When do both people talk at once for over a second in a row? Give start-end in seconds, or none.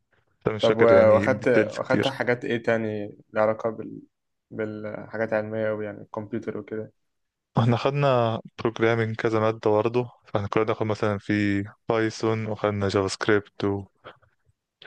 0.6-2.1